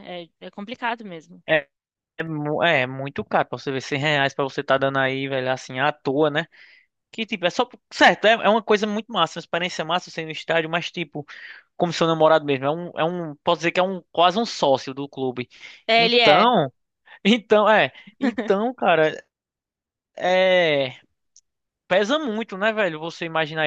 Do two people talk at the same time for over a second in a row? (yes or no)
no